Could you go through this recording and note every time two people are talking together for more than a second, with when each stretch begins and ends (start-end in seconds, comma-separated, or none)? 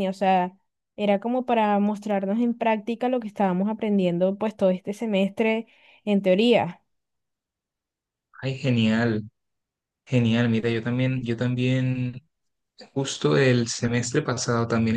none